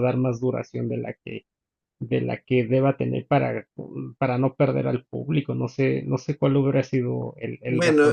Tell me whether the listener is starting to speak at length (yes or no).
yes